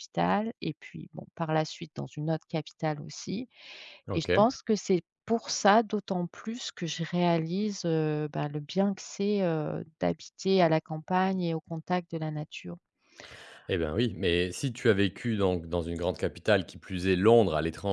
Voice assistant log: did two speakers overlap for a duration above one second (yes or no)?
no